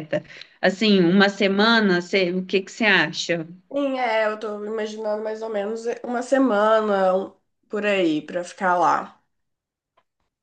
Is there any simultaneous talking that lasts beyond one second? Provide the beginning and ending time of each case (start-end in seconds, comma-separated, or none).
none